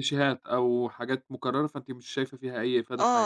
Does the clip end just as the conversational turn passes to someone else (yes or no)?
yes